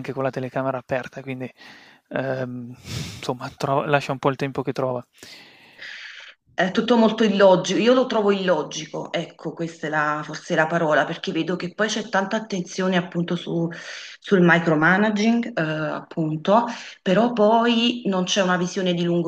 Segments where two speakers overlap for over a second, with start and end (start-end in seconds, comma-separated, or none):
none